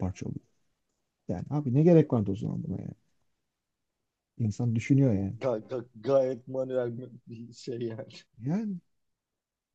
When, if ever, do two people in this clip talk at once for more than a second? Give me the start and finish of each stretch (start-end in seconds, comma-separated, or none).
none